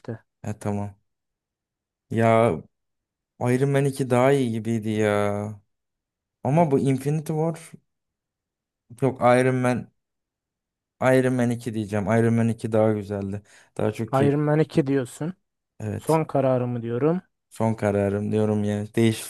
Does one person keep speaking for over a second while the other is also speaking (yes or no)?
no